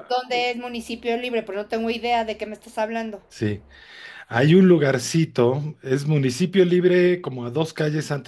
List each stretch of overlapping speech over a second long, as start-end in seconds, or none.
none